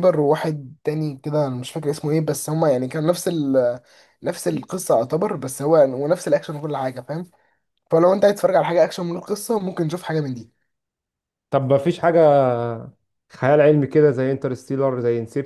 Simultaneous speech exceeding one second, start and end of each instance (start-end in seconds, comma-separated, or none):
none